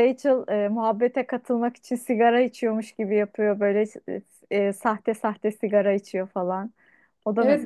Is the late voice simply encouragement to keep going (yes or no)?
no